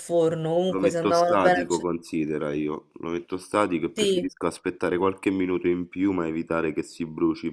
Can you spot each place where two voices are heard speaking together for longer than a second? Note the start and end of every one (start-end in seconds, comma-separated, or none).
0.7-1.9